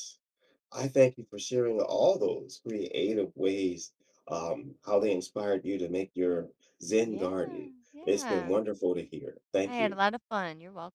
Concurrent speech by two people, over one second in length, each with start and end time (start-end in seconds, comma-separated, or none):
7.0-8.5